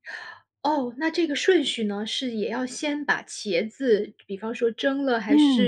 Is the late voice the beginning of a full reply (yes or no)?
yes